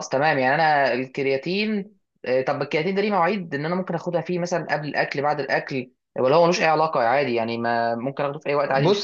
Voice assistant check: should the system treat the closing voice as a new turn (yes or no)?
yes